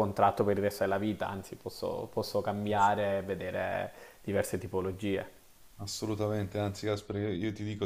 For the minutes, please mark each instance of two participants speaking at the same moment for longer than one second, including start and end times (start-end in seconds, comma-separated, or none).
none